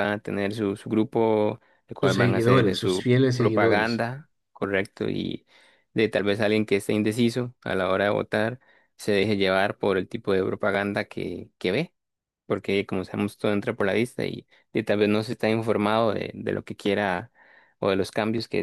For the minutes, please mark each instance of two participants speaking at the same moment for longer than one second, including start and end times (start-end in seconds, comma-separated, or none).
2.0-4.0